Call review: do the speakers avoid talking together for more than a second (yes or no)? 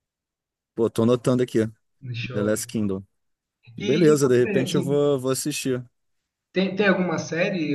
no